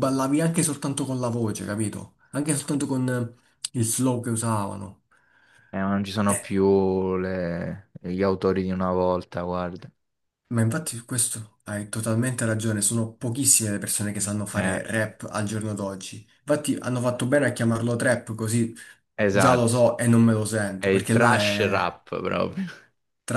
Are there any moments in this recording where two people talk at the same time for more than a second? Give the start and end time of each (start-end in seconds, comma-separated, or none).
20.8-22.0